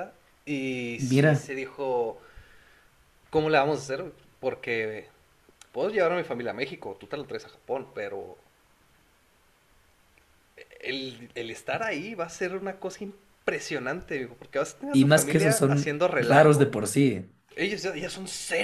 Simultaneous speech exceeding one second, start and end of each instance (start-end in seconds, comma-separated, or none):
14.9-16.7